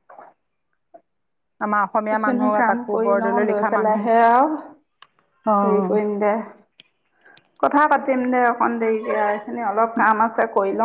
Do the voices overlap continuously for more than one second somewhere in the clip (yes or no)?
yes